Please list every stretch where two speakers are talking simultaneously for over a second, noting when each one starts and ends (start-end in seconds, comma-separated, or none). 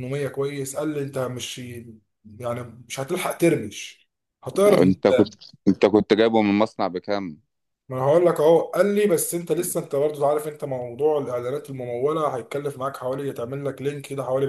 none